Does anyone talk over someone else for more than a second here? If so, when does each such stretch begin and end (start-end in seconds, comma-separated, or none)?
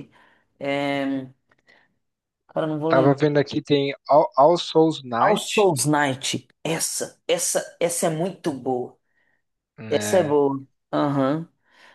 none